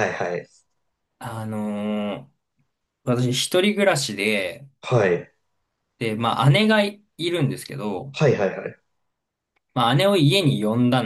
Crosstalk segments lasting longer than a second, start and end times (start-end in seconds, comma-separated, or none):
none